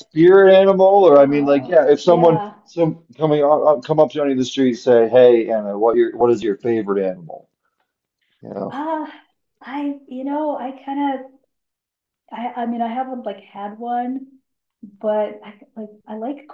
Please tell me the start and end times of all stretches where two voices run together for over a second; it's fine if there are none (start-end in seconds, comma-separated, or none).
1.1-2.6